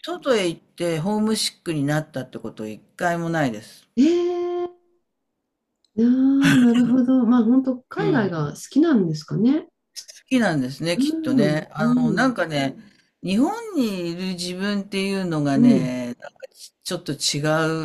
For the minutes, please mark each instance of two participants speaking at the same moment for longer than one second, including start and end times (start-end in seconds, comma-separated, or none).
11.0-12.4